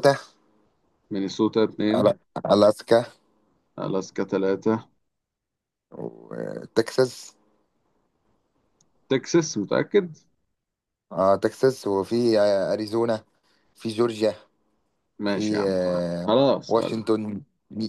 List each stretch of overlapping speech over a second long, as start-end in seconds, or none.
15.2-17.0